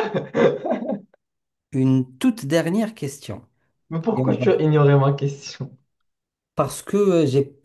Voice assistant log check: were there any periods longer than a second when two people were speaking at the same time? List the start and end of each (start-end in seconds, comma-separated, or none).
none